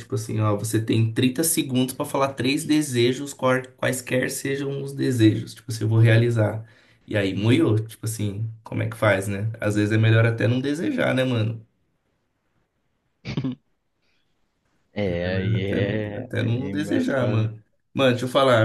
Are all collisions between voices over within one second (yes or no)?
no